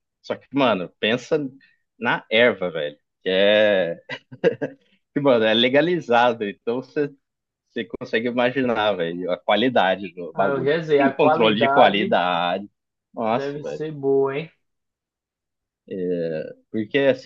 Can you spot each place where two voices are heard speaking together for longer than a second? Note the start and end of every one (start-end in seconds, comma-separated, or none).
10.3-12.2